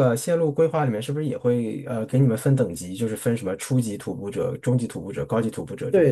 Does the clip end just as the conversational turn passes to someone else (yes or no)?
yes